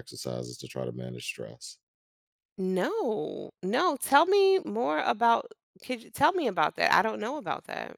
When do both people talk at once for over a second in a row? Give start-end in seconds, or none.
none